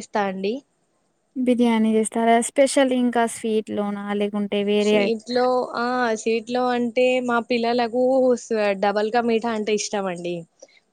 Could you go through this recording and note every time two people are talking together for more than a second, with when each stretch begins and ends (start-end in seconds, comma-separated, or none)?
none